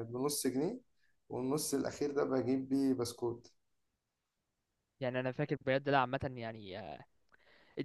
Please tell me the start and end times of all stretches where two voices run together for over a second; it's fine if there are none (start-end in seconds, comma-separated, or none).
none